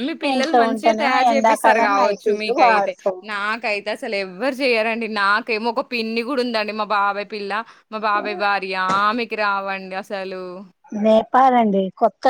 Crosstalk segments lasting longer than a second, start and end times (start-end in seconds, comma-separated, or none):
1.3-2.9